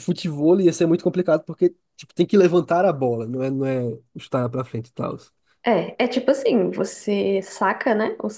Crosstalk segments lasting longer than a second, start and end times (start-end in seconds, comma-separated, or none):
none